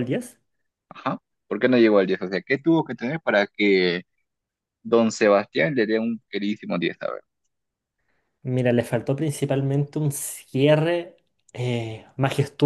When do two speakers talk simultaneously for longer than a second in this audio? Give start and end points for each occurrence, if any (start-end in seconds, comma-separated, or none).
none